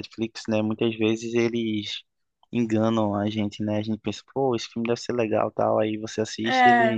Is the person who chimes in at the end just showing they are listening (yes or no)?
yes